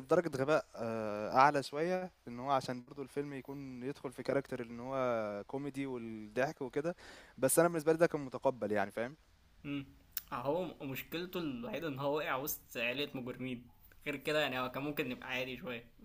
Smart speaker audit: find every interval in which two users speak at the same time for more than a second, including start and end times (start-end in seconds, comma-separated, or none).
none